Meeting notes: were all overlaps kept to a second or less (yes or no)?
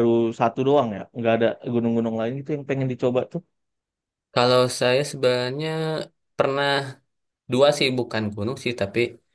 yes